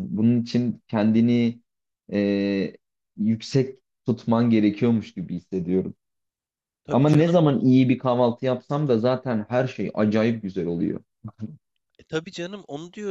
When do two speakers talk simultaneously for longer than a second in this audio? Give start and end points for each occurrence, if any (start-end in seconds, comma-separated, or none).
none